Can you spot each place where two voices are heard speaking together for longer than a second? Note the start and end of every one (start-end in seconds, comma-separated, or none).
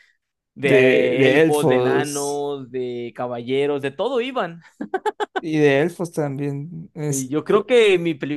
0.6-2.4